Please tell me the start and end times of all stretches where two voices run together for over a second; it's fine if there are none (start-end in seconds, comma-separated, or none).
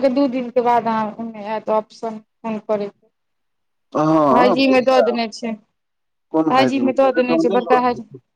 6.5-7.8